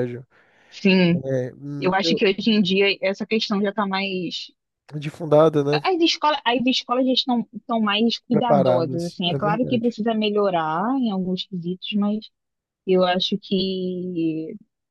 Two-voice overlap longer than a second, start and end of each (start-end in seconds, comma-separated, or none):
8.3-9.9